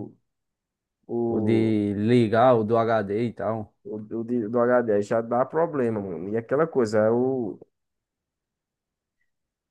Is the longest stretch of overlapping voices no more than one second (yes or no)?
yes